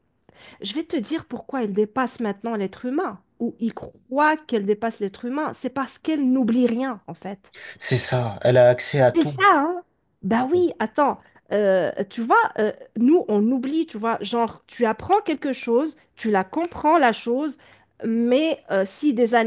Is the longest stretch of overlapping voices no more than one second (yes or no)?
yes